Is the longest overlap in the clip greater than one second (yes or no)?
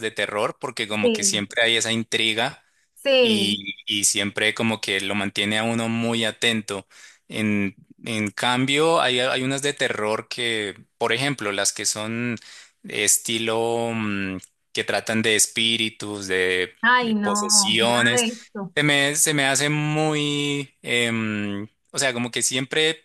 yes